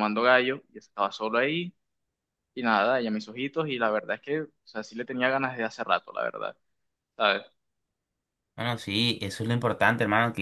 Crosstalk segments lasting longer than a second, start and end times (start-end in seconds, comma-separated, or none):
none